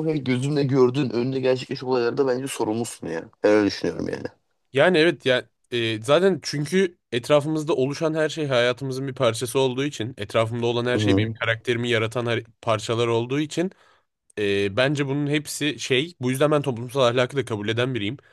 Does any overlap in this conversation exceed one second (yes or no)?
no